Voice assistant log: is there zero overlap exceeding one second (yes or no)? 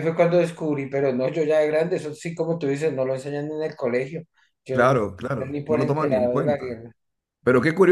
no